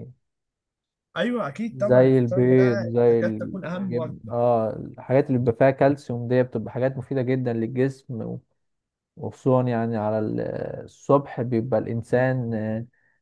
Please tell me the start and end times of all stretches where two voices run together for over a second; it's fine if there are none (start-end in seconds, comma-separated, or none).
1.7-4.3